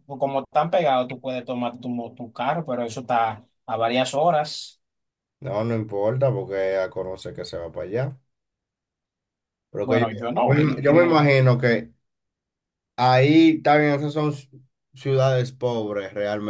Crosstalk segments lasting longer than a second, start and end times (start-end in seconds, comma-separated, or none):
9.8-11.2